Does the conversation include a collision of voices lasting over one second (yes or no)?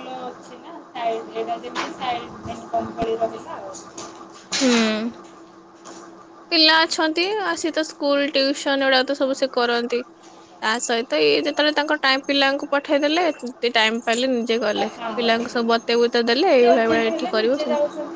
no